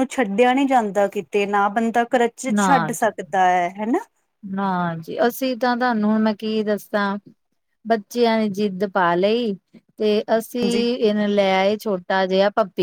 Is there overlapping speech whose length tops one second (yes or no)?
no